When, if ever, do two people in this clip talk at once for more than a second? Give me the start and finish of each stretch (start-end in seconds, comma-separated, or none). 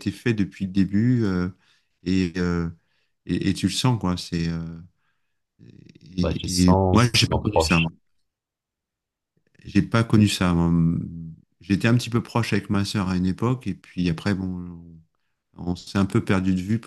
6.2-7.9